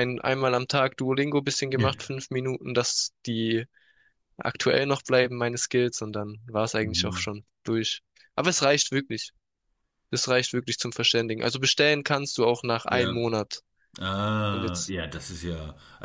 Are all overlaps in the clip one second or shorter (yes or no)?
yes